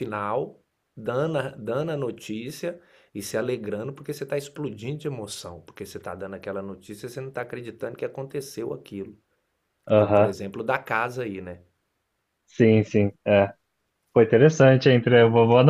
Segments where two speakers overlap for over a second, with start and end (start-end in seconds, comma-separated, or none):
none